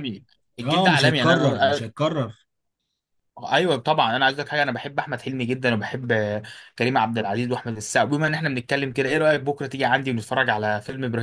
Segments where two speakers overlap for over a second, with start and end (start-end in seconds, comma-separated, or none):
0.6-1.8